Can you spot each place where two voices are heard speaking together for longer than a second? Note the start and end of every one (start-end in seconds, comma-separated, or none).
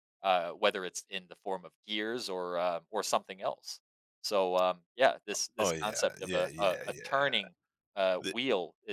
5.6-7.4